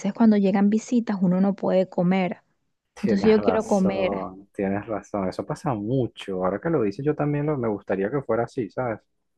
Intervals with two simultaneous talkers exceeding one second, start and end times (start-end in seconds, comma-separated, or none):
3.0-4.3